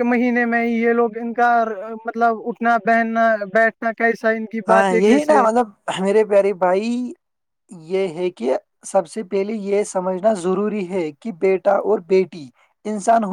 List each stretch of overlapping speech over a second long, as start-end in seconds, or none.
none